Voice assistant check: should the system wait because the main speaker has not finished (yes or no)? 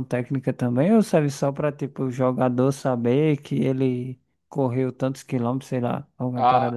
no